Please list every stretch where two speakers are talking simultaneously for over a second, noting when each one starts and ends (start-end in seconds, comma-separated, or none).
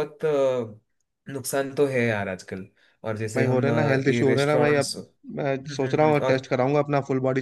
3.4-5.0